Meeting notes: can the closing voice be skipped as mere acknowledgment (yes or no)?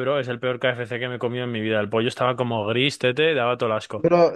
no